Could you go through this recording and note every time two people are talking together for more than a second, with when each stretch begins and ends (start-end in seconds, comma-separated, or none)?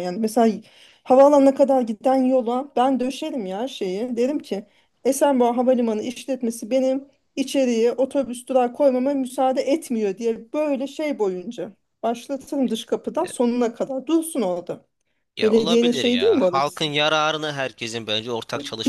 15.4-16.9